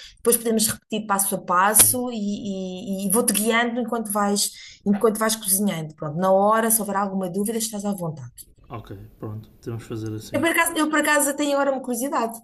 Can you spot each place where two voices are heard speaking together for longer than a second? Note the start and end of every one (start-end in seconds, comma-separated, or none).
none